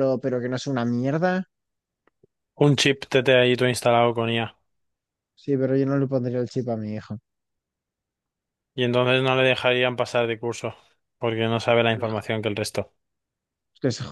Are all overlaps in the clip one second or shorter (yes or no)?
yes